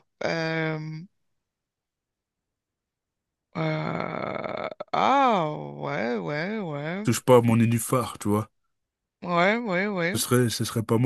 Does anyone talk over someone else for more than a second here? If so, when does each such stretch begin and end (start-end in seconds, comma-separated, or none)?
none